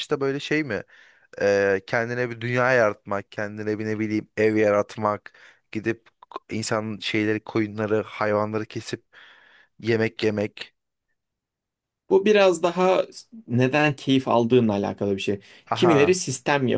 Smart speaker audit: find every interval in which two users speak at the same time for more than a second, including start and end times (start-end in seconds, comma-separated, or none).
none